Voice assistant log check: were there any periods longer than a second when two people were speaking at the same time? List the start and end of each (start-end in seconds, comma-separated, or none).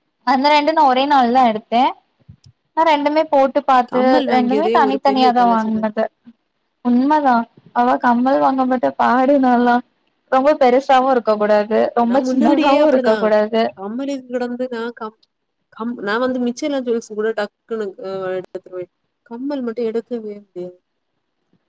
3.9-5.8